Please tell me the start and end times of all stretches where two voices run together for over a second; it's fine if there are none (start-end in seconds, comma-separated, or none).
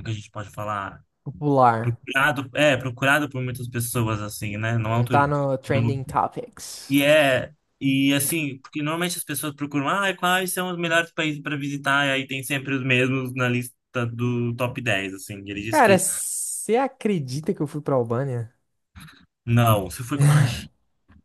none